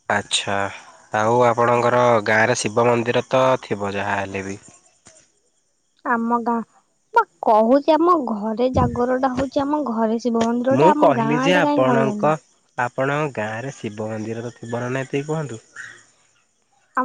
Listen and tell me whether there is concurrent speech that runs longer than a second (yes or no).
yes